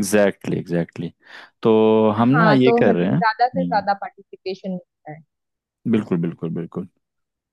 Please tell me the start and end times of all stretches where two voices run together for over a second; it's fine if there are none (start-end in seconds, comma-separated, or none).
2.3-3.9